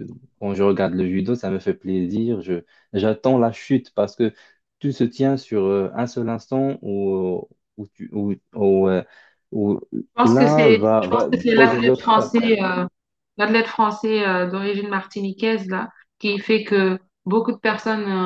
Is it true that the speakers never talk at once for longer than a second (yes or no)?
no